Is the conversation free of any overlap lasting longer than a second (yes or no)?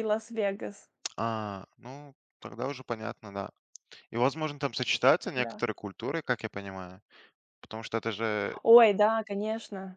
yes